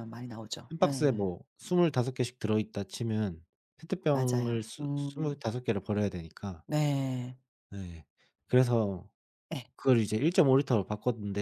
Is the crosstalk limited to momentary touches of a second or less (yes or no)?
no